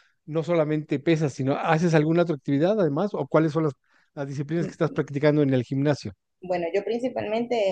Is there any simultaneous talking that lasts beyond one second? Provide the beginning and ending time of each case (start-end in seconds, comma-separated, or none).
none